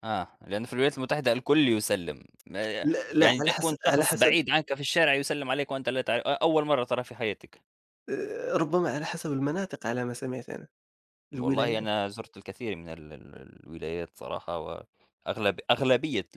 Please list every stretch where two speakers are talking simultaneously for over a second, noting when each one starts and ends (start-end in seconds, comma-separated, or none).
2.8-4.4